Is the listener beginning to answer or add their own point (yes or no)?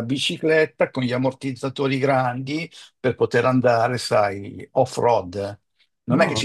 no